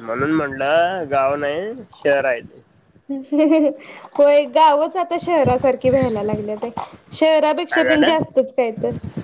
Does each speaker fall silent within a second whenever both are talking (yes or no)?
yes